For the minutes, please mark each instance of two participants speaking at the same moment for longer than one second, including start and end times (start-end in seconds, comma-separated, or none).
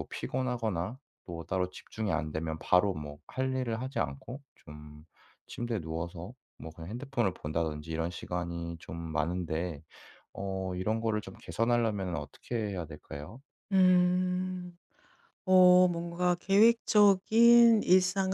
none